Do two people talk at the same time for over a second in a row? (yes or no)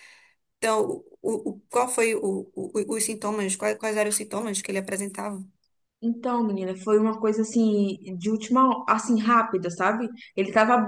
no